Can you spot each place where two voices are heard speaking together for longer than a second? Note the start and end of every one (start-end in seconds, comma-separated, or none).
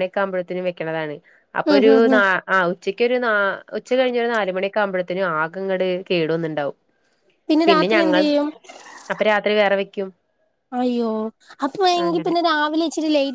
none